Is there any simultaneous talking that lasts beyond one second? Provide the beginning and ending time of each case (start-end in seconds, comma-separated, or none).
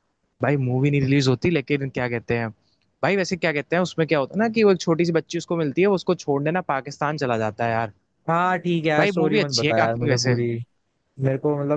9.0-10.4